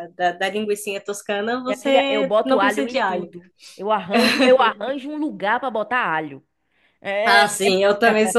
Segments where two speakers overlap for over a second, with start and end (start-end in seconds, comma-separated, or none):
1.7-3.3